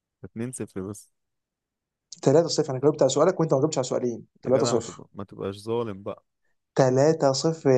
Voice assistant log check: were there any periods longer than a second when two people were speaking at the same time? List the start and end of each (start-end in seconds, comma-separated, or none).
none